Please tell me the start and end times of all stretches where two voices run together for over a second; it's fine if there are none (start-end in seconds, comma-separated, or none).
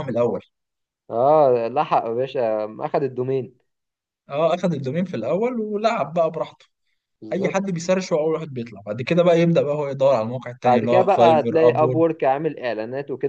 10.6-12.0